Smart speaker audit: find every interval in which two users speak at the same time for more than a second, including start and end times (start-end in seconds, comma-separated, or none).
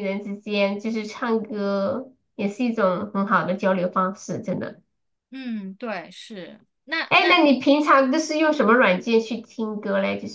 none